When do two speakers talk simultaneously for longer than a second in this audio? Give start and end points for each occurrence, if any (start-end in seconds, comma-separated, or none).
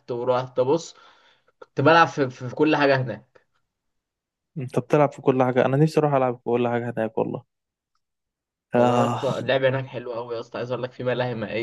none